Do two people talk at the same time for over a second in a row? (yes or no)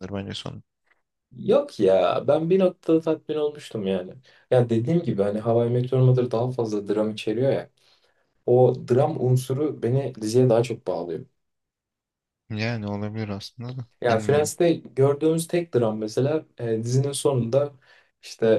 no